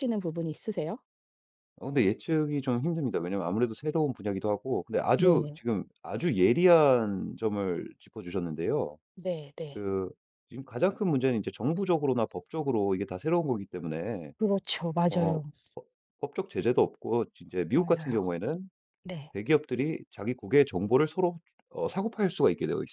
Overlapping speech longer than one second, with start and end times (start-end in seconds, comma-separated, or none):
none